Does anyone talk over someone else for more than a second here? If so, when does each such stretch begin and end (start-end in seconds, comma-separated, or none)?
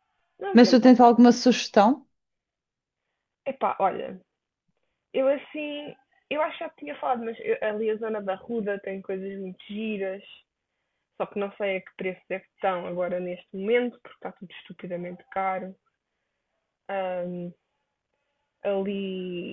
none